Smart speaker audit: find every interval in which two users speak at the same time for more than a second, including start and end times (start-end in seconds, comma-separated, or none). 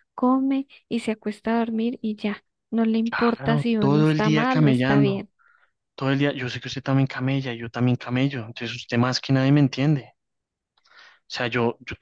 3.1-5.2